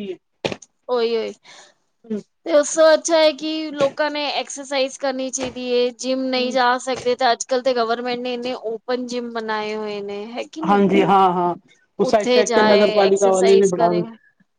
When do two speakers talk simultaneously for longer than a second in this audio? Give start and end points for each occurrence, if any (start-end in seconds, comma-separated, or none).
12.1-13.9